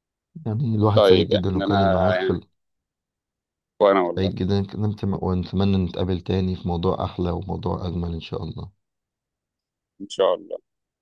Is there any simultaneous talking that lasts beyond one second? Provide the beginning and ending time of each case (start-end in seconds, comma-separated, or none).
0.9-2.4